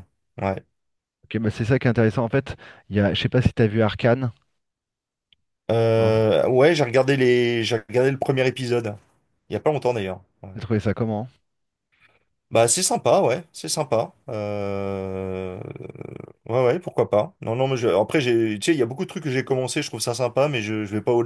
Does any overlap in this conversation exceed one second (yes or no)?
no